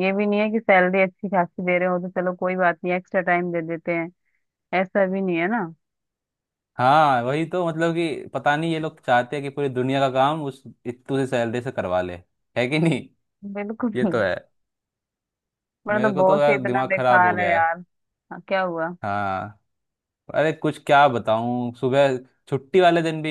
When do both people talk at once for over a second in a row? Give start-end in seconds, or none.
15.9-17.6